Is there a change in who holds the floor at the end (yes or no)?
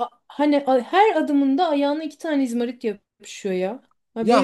yes